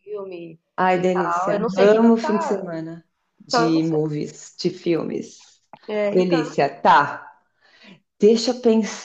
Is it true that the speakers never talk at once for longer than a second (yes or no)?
no